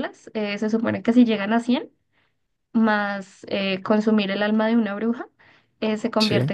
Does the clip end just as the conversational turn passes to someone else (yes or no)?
no